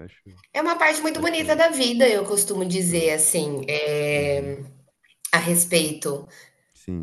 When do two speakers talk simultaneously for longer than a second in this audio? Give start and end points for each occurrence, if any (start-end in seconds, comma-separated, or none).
none